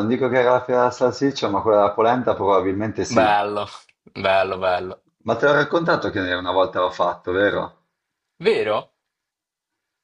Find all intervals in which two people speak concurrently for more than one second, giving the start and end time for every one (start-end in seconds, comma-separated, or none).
none